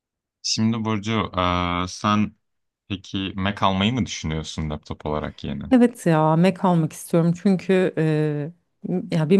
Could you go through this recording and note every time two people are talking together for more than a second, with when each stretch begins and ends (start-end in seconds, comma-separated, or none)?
none